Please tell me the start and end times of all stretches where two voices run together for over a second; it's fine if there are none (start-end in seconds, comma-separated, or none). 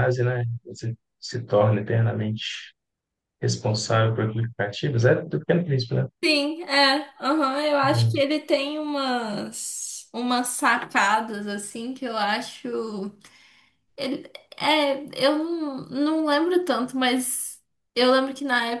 none